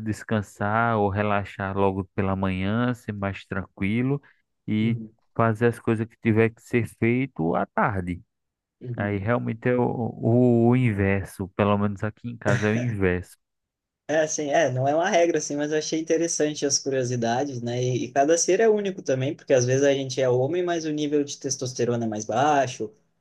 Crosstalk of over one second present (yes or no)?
no